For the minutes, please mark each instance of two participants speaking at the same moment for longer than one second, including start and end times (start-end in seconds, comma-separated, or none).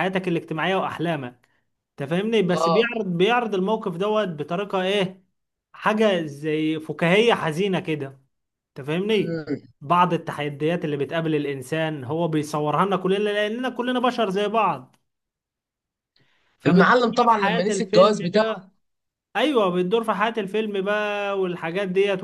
16.7-18.5